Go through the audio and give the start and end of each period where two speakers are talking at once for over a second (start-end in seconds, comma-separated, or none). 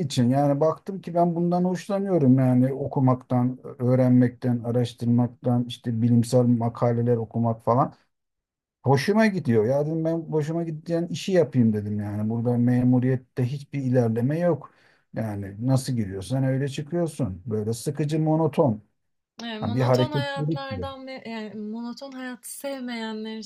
19.6-20.9